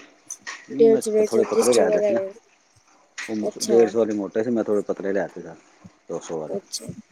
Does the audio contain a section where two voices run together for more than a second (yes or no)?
yes